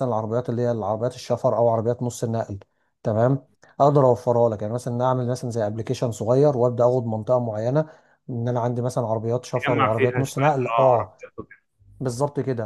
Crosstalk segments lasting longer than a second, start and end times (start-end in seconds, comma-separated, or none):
9.6-11.2